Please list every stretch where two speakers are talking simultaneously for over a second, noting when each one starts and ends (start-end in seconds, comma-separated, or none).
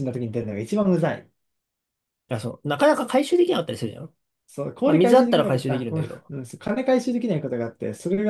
4.8-6.3